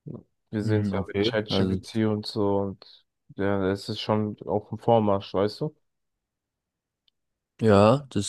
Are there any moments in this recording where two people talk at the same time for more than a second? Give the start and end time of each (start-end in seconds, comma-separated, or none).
0.6-2.0